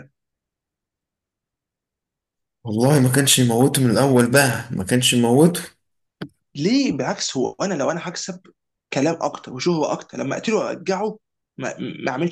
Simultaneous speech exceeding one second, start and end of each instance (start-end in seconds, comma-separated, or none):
none